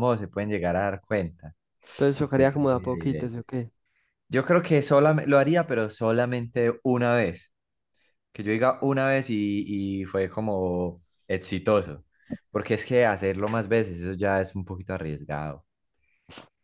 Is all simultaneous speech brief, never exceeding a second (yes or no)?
no